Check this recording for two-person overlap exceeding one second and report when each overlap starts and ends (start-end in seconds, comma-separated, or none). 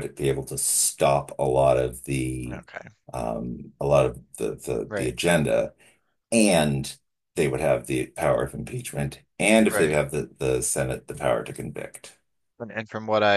none